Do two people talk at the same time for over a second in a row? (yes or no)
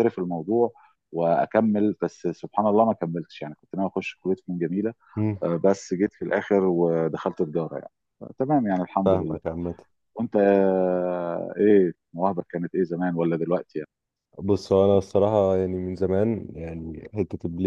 no